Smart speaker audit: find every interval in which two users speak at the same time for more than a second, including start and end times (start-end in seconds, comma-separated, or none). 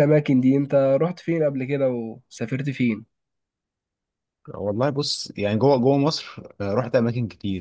none